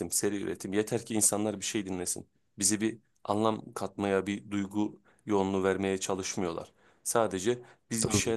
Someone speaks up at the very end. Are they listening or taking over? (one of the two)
listening